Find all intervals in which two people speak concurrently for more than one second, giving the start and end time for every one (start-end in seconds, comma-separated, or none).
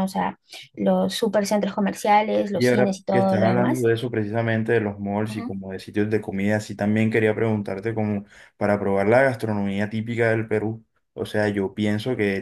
2.5-3.9